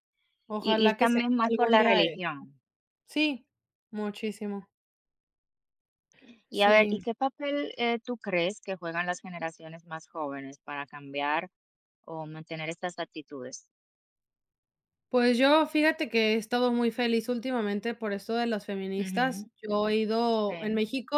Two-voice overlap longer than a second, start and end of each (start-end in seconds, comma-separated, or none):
0.6-2.2